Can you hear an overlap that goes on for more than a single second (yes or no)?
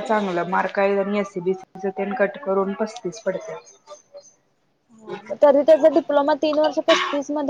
no